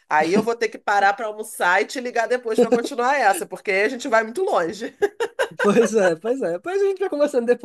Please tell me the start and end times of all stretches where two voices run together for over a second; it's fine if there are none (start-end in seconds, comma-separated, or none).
none